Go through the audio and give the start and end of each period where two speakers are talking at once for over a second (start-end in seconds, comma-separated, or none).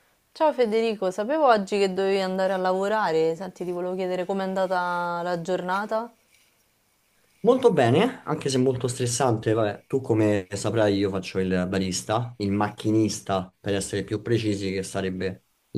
none